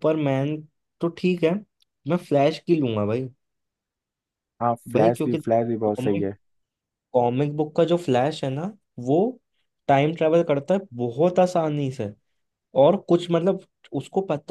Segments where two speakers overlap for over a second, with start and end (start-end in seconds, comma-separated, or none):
4.9-6.3